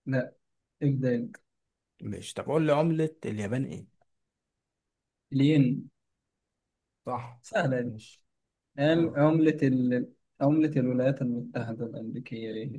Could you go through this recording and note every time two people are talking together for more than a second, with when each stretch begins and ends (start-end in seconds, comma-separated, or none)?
none